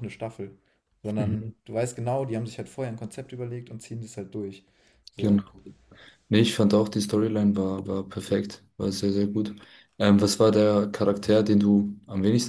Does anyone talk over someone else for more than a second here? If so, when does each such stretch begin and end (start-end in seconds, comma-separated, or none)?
none